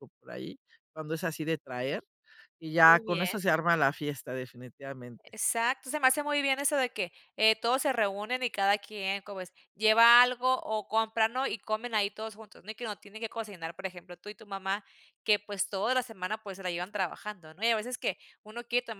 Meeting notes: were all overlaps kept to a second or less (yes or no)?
yes